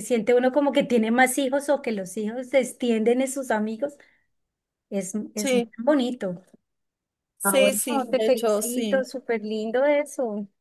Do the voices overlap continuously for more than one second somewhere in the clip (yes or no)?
yes